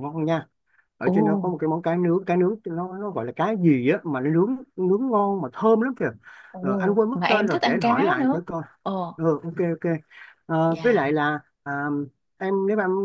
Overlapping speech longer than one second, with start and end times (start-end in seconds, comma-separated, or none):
6.6-8.4